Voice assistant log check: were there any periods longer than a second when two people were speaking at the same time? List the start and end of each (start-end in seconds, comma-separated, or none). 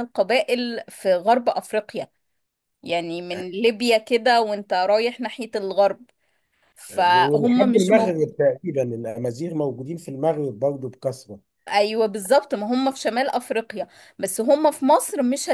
7.1-8.3